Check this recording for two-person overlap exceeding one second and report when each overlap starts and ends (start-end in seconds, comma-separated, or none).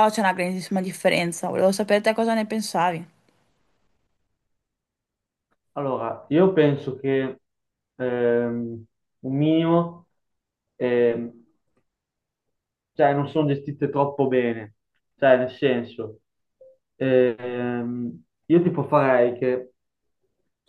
none